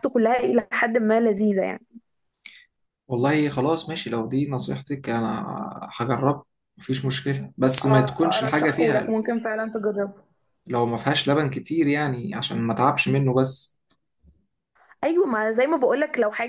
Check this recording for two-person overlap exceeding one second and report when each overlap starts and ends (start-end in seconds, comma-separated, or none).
7.8-9.1